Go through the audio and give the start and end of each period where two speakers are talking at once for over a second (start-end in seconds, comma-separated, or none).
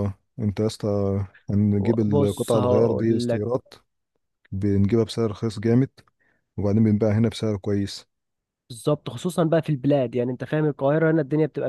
2.1-3.4